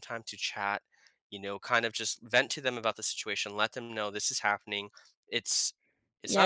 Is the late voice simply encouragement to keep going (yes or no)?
no